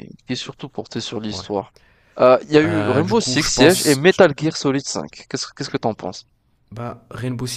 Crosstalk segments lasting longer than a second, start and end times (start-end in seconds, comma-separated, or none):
2.6-4.0